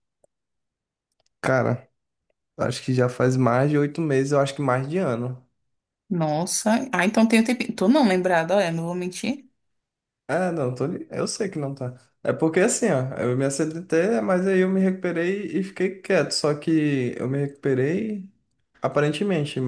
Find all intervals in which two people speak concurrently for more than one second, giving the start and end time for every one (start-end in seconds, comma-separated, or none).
none